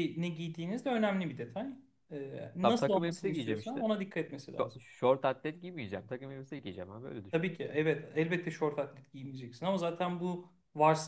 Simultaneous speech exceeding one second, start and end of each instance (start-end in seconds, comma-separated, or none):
2.6-3.9